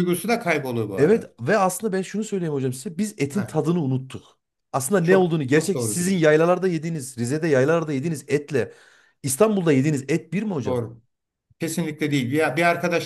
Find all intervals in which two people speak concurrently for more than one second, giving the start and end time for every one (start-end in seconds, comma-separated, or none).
5.0-6.3